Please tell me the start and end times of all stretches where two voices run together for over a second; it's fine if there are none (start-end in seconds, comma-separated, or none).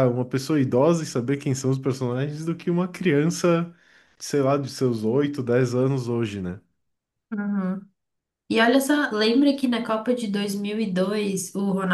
none